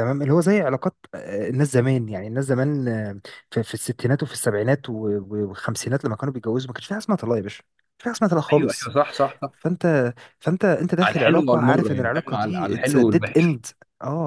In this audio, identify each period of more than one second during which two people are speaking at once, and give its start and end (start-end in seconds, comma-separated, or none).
11.0-13.6